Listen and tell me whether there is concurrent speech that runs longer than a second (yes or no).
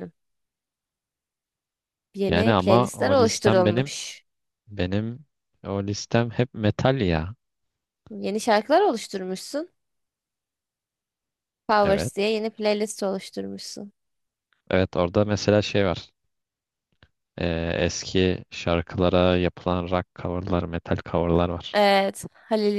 yes